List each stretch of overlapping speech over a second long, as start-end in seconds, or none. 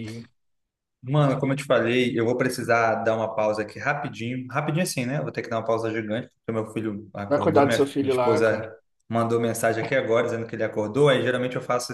7.3-8.7